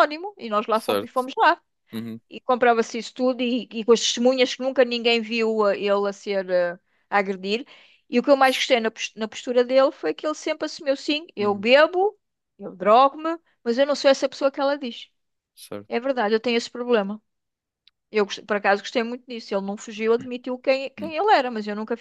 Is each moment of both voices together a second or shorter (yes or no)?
yes